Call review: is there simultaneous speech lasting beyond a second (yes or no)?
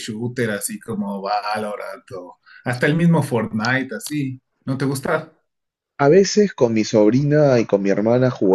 no